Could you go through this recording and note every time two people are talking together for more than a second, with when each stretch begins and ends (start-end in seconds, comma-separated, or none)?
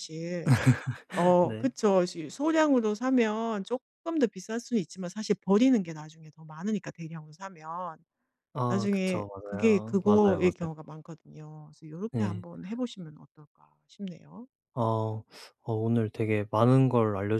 8.7-10.5